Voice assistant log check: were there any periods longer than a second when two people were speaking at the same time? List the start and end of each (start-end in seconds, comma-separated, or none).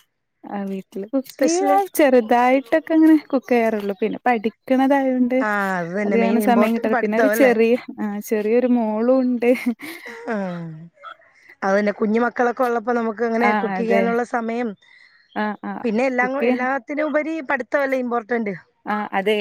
6.0-7.5